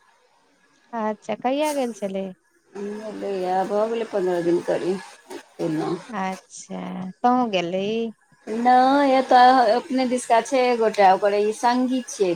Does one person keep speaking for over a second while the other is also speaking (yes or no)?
no